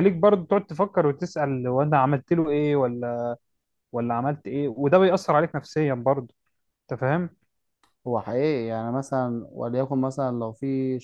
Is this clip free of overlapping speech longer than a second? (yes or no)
yes